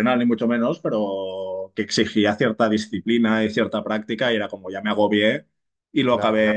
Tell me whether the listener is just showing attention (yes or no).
yes